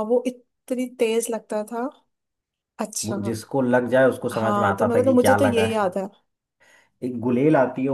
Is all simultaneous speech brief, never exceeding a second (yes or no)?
no